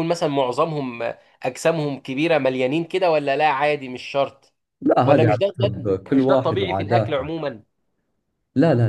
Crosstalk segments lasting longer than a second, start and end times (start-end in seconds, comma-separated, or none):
5.0-7.3